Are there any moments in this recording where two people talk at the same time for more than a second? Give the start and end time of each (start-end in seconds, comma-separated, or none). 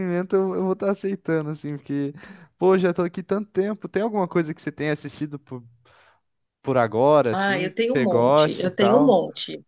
7.3-9.2